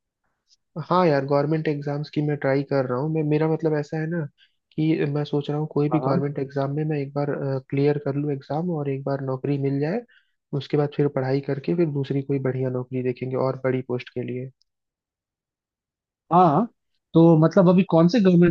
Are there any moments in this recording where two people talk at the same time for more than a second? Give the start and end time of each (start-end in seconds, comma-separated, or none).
none